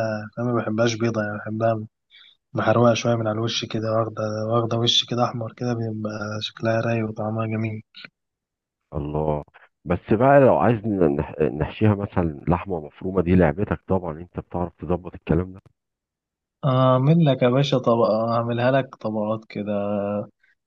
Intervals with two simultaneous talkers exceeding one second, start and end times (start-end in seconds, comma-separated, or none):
none